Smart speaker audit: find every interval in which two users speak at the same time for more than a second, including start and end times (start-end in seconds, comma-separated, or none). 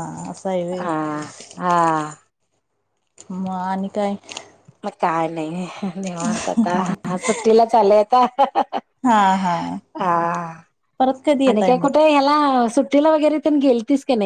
none